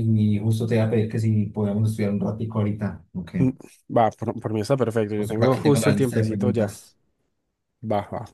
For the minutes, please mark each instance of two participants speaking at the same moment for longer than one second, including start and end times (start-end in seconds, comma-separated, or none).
5.2-6.8